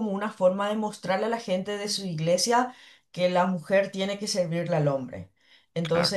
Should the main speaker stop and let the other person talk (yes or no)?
no